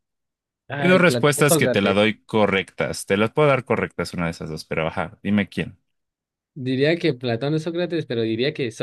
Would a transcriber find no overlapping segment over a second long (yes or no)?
no